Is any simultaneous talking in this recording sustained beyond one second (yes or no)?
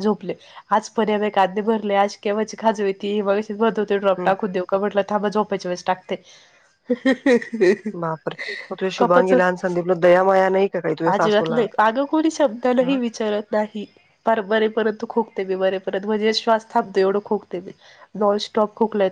no